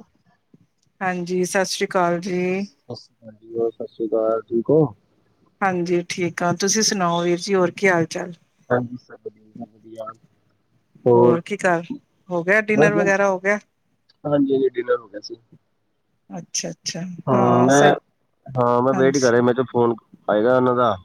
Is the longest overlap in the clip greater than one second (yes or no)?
no